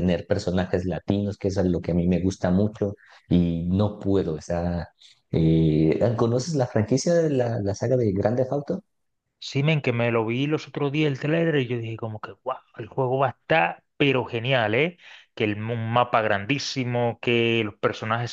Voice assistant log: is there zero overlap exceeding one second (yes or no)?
yes